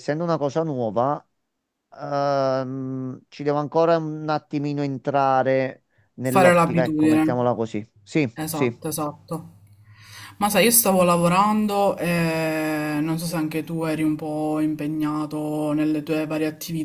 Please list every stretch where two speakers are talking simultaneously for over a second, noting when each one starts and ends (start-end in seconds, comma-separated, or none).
6.2-7.5